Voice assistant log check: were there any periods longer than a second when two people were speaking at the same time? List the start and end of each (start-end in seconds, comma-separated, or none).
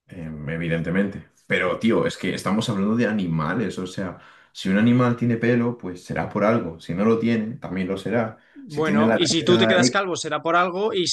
8.8-10.0